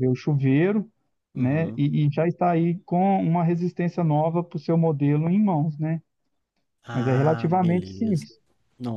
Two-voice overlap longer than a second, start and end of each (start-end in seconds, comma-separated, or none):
6.9-8.3